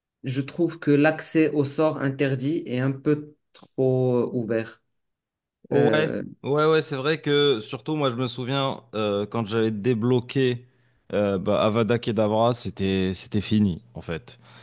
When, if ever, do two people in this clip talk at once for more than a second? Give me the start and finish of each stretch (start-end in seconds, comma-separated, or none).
none